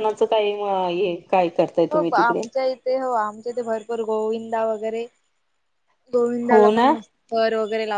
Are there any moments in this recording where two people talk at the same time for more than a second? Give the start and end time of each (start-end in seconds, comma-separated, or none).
none